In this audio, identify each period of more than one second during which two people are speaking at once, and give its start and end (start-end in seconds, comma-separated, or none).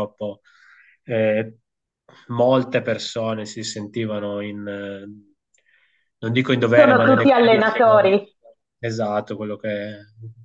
6.7-8.1